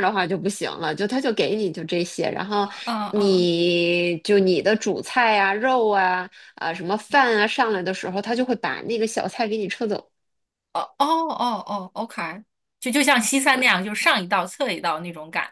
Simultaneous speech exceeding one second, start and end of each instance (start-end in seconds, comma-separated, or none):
none